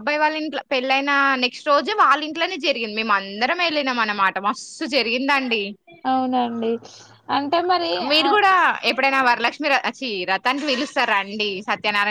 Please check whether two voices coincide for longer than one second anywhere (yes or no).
no